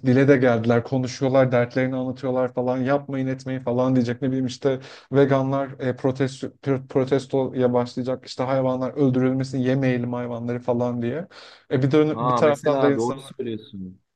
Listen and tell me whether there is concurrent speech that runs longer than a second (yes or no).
yes